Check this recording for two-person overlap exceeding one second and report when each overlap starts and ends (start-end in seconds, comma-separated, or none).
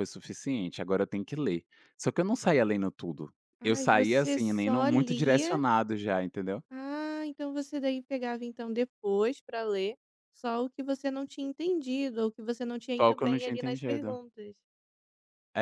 3.6-5.6, 13.0-14.2